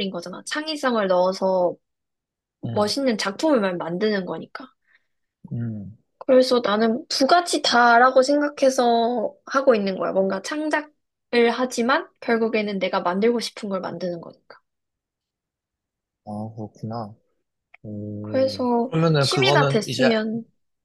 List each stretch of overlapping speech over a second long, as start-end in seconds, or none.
18.2-20.1